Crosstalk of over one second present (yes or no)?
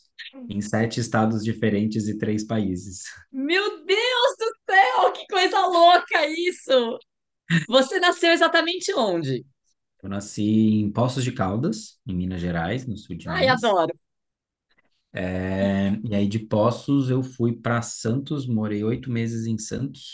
no